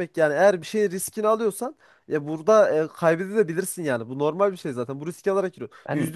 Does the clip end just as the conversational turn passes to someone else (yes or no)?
no